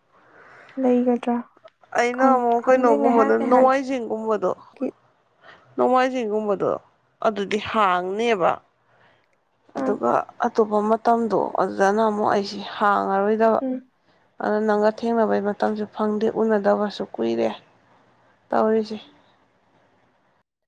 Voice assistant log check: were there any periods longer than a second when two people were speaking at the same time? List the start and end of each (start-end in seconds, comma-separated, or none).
2.2-3.8